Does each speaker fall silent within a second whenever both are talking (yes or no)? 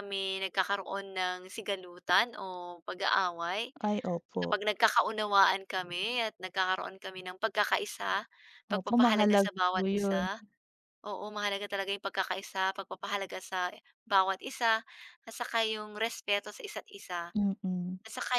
no